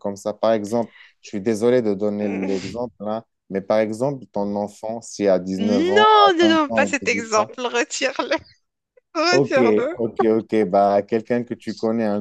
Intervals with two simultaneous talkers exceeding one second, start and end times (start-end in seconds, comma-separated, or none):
5.6-7.5